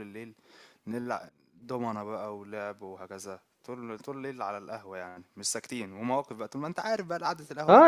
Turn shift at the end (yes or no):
yes